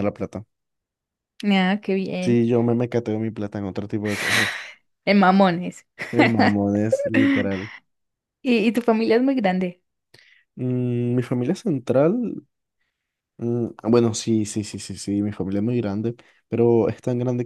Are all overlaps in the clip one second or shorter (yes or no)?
yes